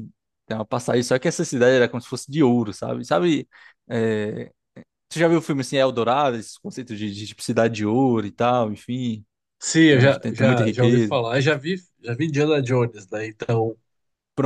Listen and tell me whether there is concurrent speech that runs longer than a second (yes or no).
yes